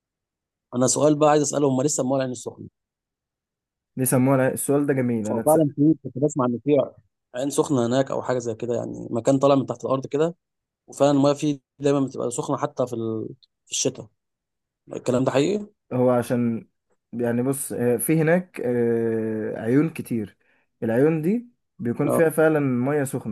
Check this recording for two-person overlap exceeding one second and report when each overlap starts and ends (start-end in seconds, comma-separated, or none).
none